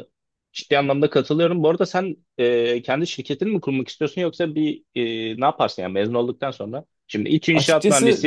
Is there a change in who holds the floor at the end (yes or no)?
no